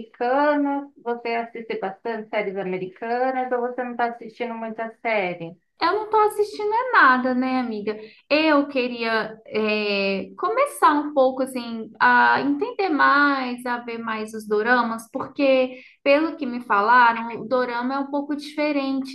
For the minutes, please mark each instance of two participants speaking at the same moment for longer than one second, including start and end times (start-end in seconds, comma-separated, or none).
none